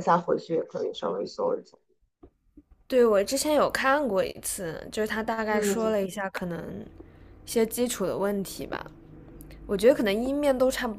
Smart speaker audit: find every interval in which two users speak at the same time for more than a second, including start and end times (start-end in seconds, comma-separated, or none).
none